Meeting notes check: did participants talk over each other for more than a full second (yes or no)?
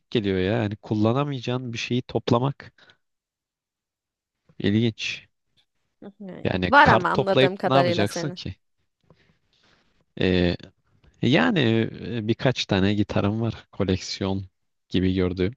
yes